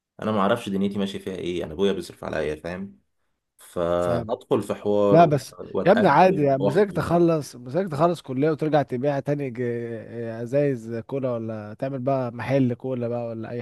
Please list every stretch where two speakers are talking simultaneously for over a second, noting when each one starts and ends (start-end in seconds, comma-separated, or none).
5.1-7.0